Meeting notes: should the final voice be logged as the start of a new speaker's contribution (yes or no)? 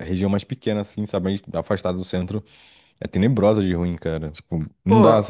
yes